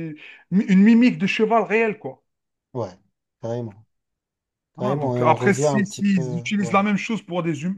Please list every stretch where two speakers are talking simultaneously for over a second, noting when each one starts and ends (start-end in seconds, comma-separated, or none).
4.8-6.8